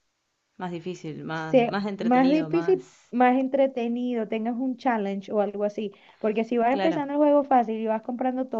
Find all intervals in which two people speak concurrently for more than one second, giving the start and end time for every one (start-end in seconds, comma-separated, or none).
1.3-3.1